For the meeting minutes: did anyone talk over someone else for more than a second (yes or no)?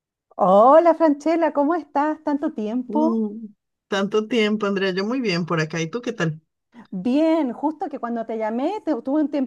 no